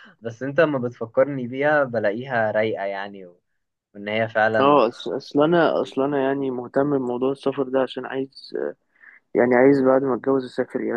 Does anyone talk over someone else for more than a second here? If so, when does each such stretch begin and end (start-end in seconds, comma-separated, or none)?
none